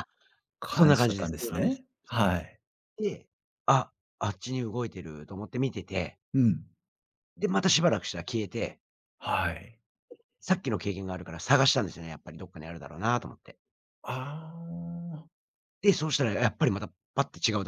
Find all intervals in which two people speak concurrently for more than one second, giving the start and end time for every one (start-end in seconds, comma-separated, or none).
0.7-2.2